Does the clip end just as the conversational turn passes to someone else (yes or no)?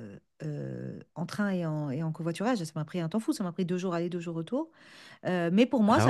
no